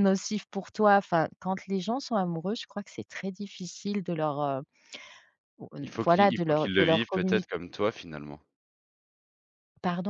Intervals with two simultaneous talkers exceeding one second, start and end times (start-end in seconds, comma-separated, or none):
6.0-7.5